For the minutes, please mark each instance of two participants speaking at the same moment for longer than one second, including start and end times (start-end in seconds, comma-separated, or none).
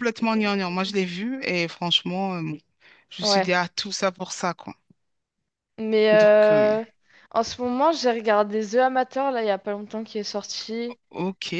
none